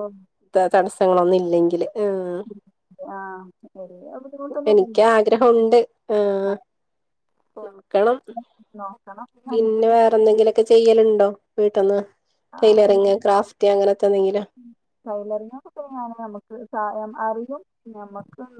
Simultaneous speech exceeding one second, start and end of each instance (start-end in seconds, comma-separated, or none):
none